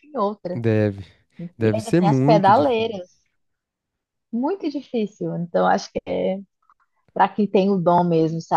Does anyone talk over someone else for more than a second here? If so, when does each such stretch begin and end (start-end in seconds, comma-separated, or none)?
1.6-3.0